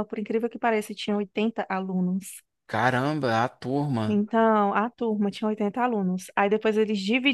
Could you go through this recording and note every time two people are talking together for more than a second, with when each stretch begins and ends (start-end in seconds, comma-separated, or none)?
none